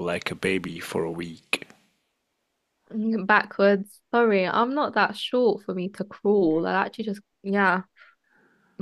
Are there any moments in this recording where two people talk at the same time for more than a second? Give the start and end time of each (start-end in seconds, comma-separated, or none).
none